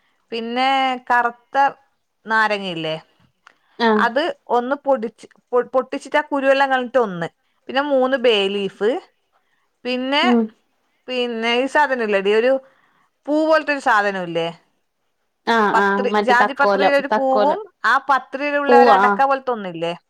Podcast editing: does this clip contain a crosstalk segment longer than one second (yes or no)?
yes